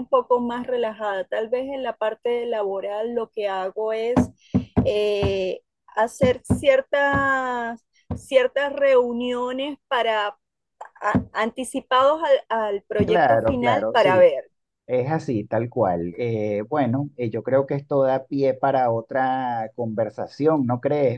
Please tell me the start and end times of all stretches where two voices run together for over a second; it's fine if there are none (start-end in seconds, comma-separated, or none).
13.1-14.3